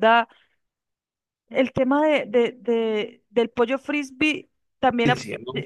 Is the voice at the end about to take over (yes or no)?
no